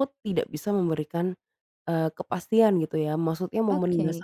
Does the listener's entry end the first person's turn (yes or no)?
no